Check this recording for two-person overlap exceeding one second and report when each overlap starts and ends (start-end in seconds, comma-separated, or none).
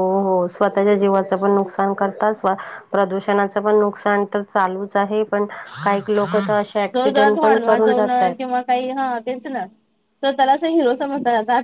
6.9-8.4